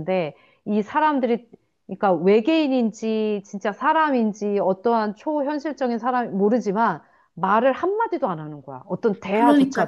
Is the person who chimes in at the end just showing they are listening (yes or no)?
no